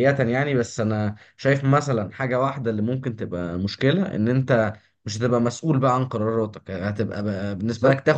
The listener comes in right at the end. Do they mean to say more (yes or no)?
no